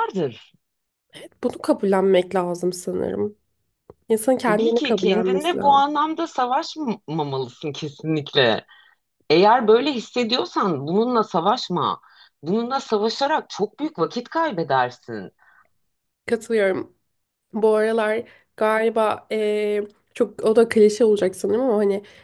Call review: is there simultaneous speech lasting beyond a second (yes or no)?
yes